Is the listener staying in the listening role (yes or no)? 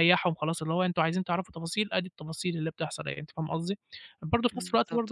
yes